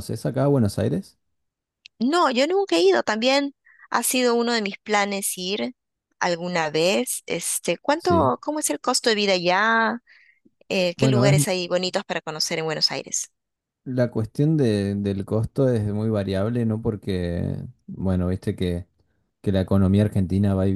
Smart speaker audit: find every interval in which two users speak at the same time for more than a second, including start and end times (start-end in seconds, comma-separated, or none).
none